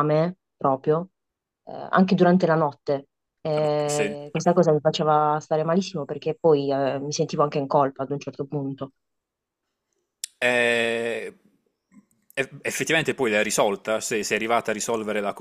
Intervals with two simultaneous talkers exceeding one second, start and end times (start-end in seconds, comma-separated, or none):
none